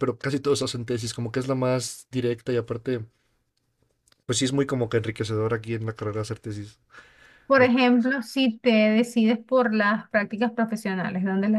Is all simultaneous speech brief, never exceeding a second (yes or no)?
yes